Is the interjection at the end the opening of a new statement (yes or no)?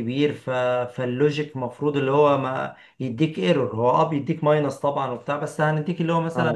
no